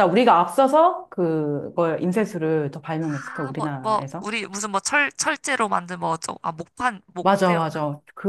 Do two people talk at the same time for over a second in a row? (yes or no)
yes